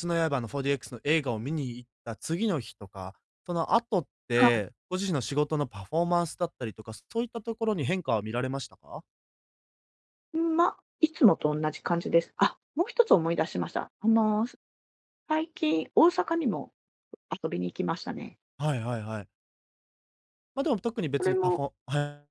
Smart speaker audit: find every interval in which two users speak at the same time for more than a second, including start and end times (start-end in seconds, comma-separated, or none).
none